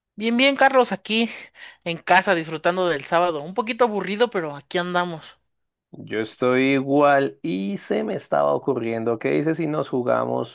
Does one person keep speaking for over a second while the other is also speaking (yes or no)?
no